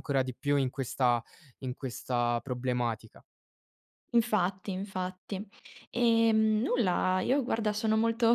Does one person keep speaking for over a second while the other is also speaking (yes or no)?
no